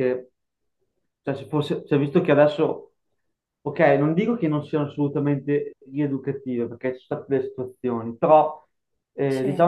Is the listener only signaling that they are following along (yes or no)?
yes